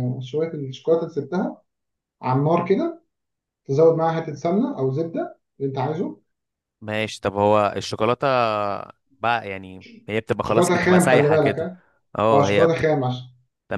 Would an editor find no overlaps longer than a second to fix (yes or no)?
no